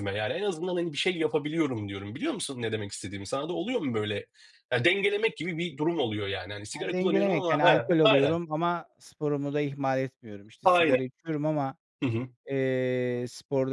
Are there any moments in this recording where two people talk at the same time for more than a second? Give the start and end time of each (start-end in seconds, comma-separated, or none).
6.7-8.4